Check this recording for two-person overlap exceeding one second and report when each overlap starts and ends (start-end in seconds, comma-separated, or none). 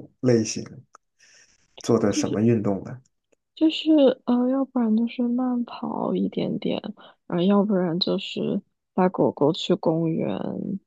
none